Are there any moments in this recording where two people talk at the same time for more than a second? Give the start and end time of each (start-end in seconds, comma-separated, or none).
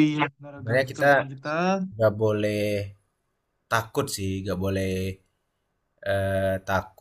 none